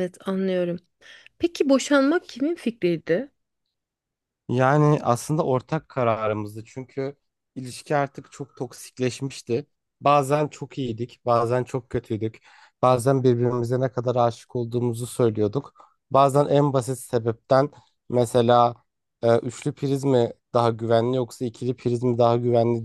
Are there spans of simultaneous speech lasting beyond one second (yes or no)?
no